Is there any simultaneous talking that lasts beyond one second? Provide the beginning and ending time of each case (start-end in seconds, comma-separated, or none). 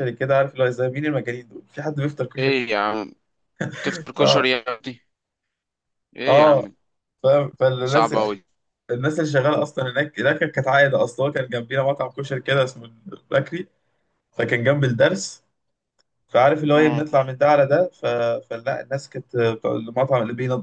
none